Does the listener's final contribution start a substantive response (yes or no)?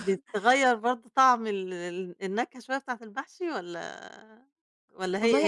yes